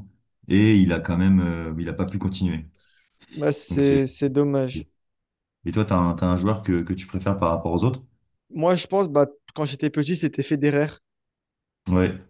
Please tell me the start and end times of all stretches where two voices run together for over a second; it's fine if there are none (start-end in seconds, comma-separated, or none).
none